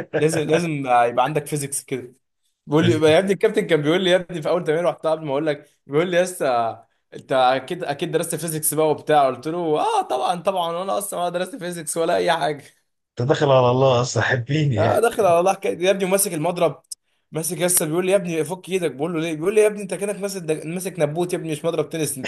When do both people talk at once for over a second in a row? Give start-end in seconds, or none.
none